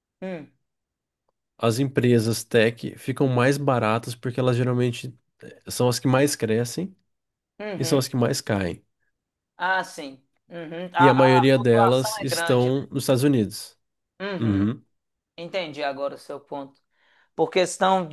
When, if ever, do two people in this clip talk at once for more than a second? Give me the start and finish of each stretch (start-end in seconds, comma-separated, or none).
11.0-12.8